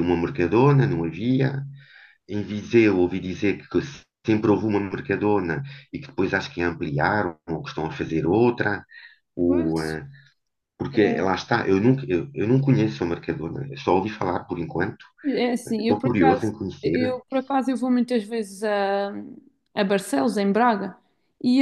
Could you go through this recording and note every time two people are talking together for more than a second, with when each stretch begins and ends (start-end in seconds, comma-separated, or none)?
15.8-17.2